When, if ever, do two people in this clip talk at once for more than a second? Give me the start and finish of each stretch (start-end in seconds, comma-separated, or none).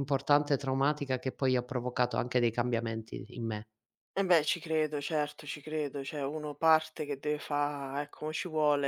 none